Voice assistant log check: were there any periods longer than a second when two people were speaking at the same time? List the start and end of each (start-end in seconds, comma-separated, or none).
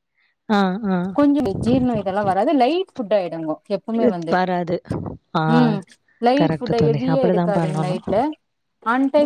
6.4-8.0